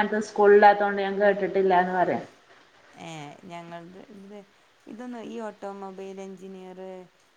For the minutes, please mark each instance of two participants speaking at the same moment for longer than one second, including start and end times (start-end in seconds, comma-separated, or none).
none